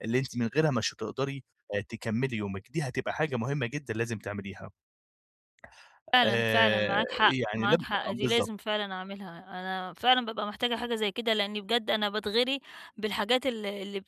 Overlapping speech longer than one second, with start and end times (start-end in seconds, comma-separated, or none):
6.2-8.5